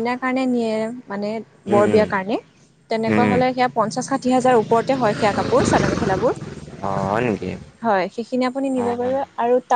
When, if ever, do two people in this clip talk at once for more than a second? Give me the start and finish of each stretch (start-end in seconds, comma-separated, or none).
none